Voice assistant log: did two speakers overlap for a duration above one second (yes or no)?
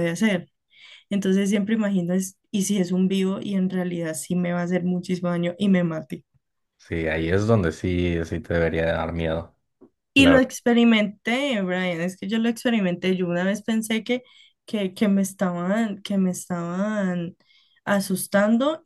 no